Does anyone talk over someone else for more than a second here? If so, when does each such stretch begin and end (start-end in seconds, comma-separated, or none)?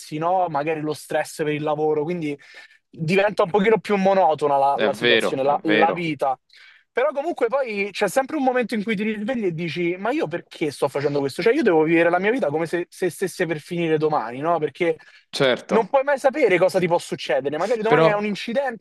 4.7-6.1